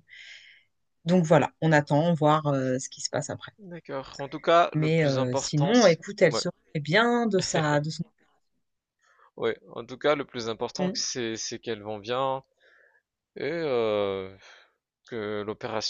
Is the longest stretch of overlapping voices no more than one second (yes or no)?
no